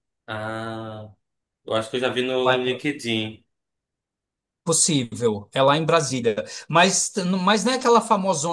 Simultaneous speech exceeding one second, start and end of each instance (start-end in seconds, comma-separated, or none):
none